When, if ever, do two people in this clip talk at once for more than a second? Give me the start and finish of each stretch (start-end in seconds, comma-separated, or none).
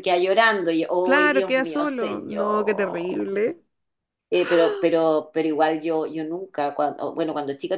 1.0-3.3